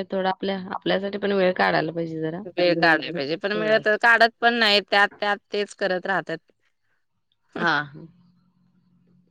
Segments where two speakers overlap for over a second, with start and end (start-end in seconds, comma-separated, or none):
none